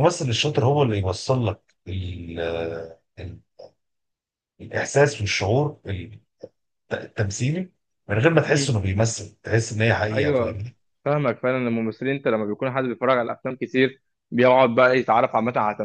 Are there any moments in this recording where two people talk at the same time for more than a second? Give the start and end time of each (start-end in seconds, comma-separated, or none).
none